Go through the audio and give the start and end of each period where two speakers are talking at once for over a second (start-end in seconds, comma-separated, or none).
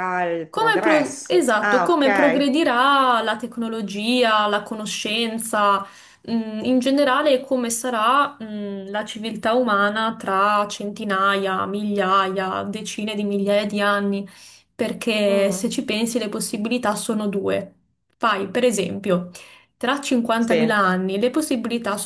0.5-2.6